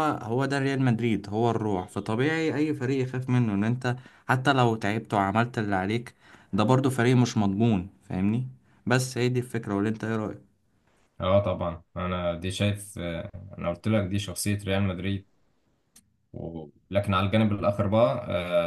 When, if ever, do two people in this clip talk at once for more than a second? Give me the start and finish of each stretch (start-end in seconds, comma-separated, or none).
none